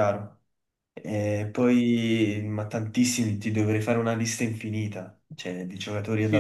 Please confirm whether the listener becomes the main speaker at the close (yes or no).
yes